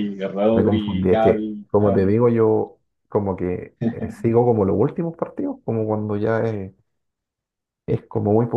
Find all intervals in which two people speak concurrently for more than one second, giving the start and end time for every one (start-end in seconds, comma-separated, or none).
0.5-2.1